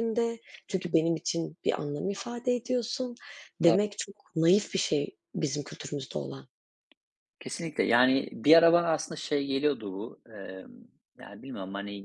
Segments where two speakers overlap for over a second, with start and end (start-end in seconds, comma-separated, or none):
none